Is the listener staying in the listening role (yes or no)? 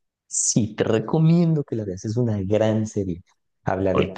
yes